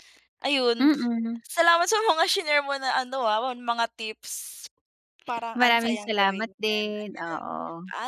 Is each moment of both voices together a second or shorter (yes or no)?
no